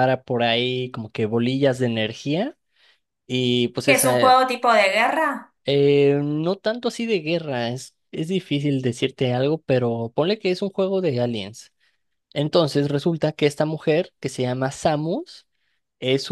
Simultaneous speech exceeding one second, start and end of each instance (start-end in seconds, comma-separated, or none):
none